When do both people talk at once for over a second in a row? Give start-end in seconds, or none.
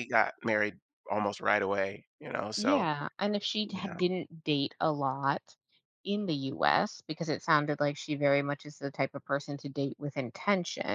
none